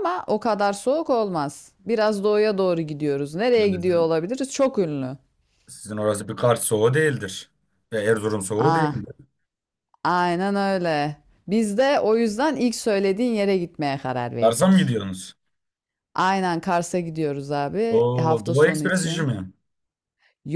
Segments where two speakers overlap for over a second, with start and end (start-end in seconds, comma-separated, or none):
17.9-19.3